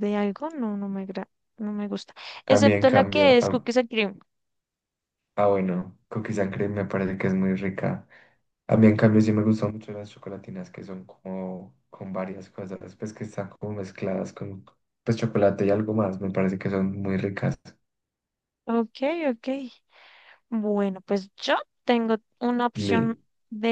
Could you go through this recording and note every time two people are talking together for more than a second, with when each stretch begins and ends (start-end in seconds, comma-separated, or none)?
2.5-3.6